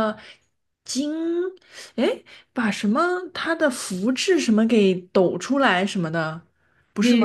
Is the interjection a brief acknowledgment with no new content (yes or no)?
no